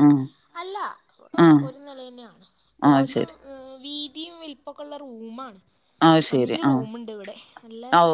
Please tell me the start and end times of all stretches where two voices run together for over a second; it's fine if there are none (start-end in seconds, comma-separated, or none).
none